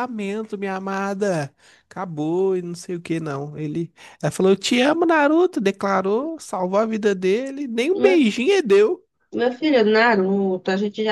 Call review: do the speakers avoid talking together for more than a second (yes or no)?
yes